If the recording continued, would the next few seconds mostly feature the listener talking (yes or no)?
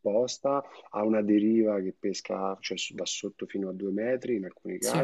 no